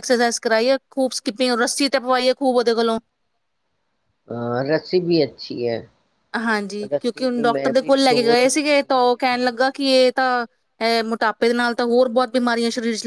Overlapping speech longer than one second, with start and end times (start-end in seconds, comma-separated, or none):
6.9-9.7